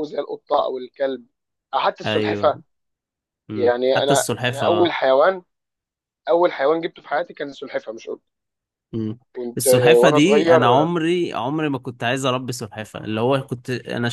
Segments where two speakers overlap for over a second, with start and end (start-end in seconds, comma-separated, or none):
3.5-5.0, 9.6-10.9